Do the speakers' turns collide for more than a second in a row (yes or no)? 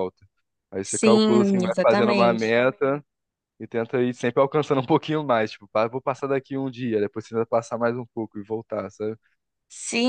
yes